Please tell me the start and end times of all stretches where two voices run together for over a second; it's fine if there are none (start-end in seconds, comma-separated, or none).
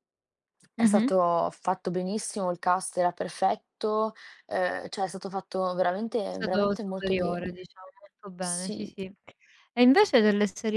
6.3-7.7